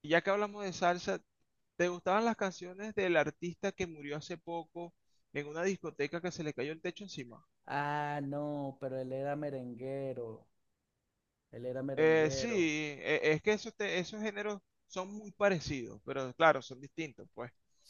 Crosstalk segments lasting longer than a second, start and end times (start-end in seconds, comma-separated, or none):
none